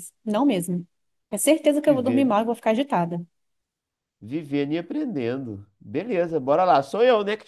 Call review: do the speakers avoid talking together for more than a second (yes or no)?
yes